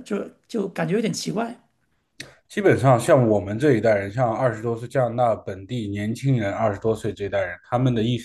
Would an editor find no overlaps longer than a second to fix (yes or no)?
yes